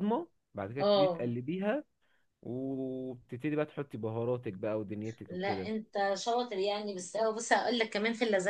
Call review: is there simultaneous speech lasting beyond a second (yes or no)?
no